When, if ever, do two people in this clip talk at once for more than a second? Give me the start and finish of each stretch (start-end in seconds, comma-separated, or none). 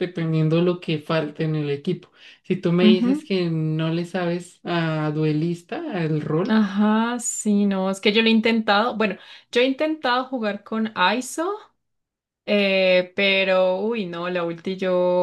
none